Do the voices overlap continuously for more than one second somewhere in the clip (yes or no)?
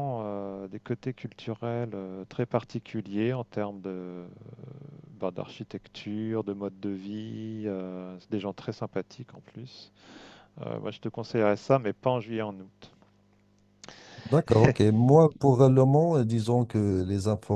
no